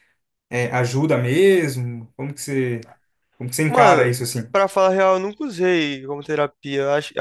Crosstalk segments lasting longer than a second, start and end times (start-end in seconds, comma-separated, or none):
none